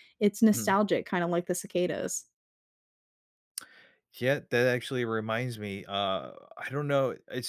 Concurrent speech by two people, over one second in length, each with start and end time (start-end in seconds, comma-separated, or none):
none